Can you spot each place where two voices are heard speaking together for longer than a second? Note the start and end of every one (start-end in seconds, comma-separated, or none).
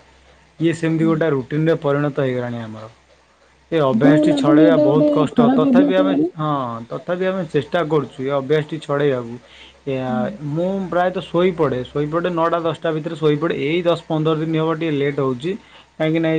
3.9-6.2